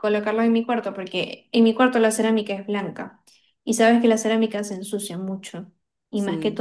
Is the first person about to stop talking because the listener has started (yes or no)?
no